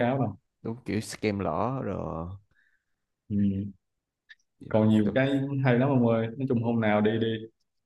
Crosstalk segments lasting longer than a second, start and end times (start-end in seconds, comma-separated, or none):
none